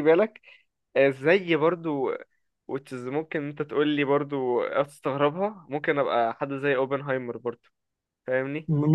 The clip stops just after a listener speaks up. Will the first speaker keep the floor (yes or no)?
no